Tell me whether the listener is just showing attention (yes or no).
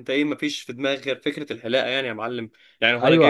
no